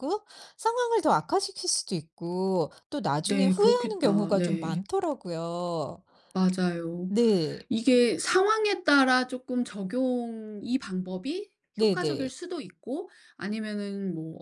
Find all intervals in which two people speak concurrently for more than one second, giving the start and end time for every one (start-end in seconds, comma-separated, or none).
3.3-4.8